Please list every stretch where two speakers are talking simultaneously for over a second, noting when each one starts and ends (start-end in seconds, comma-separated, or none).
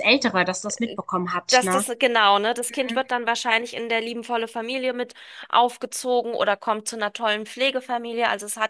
none